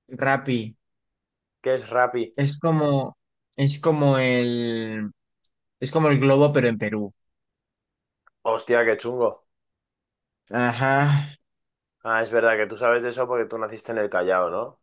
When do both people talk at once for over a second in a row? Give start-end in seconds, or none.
none